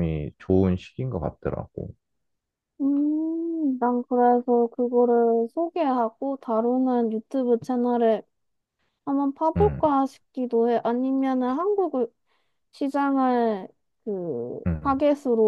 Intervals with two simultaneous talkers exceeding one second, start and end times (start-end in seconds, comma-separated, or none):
none